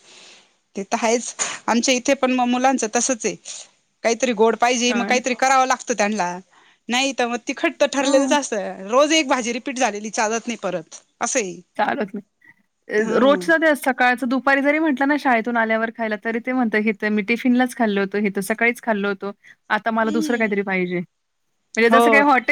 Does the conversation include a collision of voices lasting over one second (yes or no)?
no